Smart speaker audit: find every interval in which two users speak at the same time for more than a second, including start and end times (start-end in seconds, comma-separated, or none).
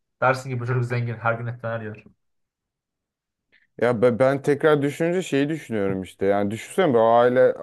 none